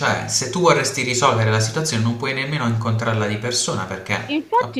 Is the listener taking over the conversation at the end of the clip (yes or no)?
yes